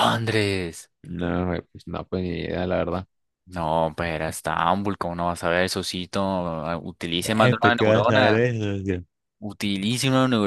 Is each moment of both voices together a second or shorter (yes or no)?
no